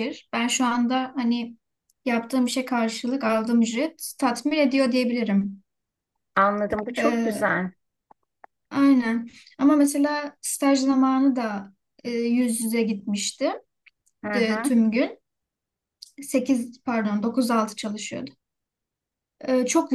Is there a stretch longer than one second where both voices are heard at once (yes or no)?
no